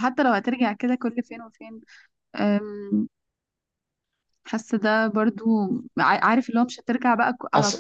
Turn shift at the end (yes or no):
no